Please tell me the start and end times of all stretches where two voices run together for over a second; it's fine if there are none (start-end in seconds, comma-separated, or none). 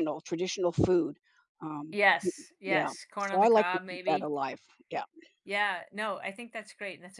1.9-4.3